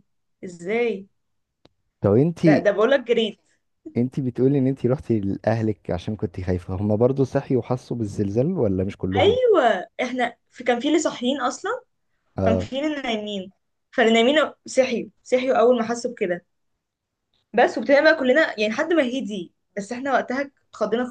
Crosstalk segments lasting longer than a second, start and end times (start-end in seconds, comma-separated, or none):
none